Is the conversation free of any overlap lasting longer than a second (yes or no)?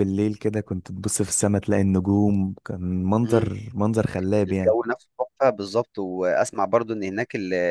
yes